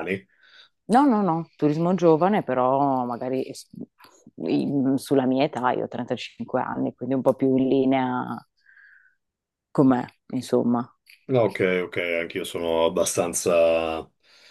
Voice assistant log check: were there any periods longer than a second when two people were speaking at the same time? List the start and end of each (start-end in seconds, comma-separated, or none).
none